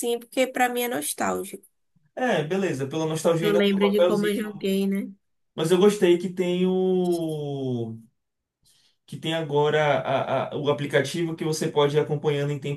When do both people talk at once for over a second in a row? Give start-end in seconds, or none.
3.4-4.7